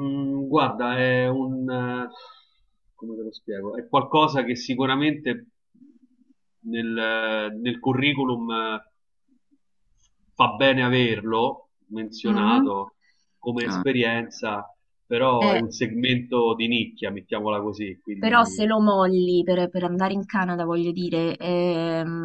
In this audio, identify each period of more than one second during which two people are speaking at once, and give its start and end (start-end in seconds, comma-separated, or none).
none